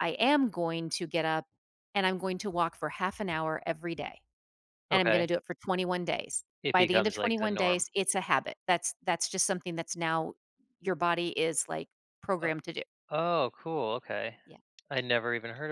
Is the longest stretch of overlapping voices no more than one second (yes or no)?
no